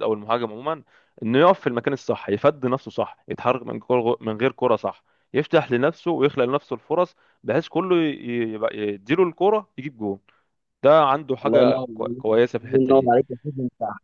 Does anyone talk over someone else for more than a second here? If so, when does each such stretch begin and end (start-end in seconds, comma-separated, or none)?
11.4-13.1